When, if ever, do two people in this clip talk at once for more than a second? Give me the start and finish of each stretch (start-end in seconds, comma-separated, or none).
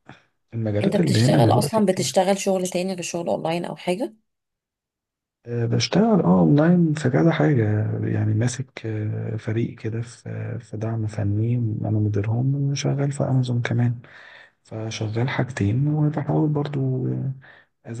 0.8-2.2